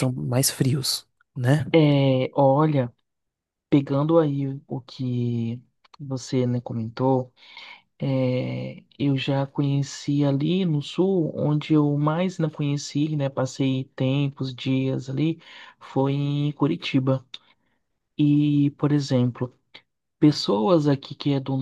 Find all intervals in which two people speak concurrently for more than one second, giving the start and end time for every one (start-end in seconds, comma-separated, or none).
none